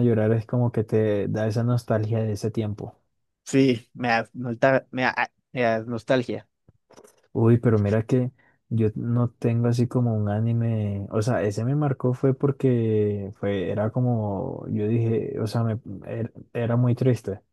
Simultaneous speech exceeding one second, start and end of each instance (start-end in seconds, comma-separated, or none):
none